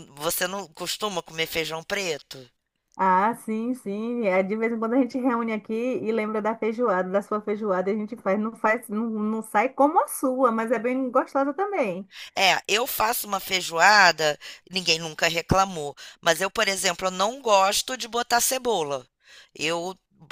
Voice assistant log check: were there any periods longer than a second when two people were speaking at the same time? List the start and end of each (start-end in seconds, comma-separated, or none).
none